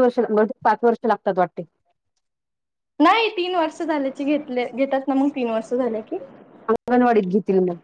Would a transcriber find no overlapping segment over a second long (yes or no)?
yes